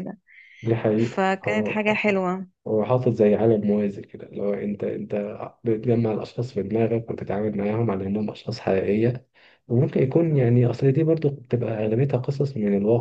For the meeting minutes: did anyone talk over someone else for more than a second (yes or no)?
yes